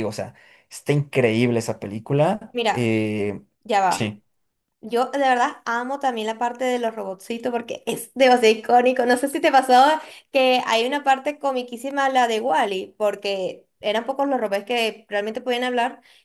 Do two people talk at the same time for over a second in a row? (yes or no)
no